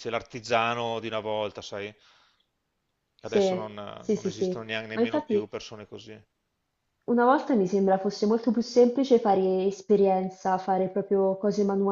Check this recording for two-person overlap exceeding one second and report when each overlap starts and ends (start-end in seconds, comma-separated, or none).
3.2-5.5